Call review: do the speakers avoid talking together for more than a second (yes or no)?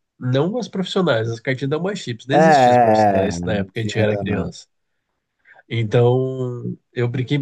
no